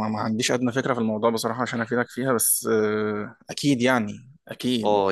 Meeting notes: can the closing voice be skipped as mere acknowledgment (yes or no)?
no